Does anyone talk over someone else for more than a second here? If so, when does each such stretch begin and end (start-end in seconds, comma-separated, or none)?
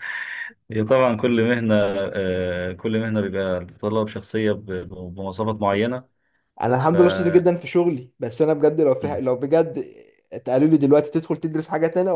none